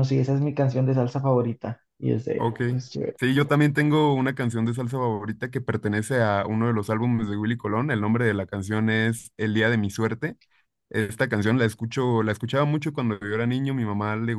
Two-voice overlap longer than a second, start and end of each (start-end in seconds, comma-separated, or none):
none